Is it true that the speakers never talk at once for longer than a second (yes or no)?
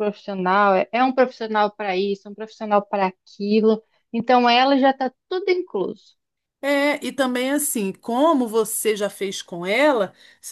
yes